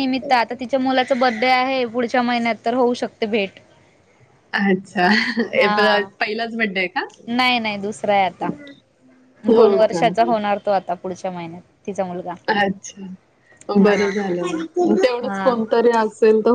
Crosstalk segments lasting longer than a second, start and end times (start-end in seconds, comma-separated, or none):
none